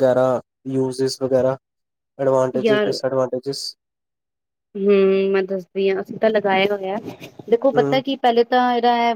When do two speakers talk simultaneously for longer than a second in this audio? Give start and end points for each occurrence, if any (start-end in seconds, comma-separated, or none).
none